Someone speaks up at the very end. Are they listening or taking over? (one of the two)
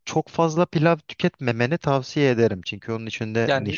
taking over